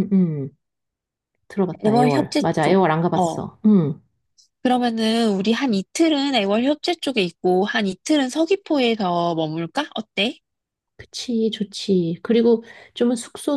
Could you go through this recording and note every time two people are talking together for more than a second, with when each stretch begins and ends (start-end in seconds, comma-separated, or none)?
1.8-3.5